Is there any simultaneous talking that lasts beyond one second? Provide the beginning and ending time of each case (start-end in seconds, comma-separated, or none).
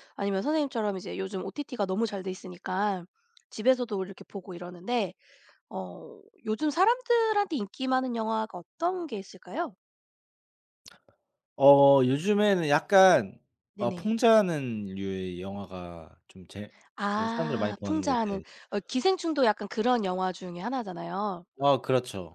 17.1-18.4